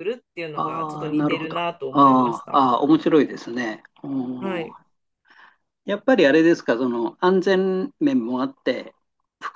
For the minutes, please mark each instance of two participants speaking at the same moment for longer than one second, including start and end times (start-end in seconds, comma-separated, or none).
0.5-2.6